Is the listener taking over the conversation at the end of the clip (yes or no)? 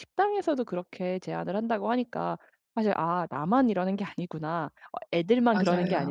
no